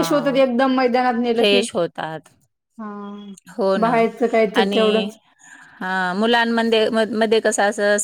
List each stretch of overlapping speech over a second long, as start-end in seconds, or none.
none